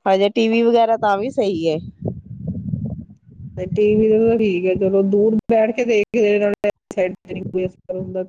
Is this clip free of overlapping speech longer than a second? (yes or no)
yes